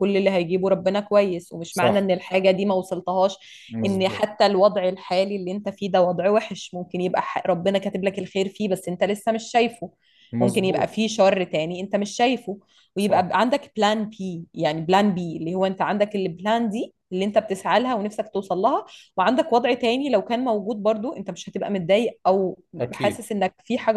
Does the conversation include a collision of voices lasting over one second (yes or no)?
no